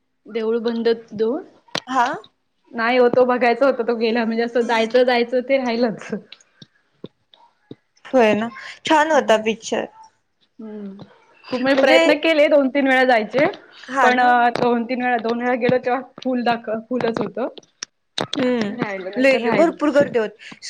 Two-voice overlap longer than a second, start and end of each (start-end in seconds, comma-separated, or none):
18.8-20.2